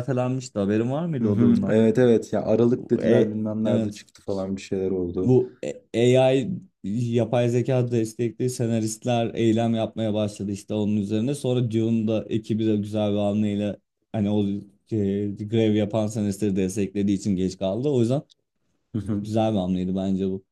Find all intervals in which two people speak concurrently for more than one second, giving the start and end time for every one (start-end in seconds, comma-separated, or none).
2.8-4.0